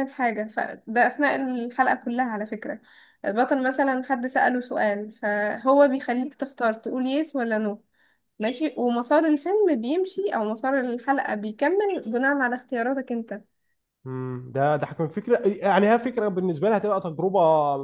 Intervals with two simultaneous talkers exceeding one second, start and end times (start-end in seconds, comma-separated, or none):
none